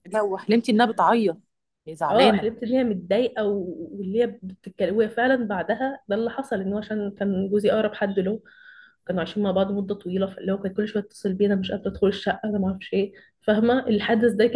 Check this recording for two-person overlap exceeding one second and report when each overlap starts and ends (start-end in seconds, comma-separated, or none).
none